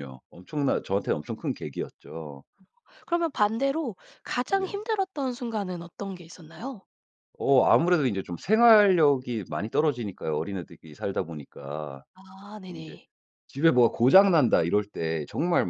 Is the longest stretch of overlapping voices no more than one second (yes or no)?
yes